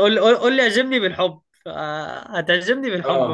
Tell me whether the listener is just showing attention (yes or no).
no